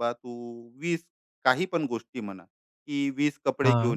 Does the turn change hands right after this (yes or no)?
no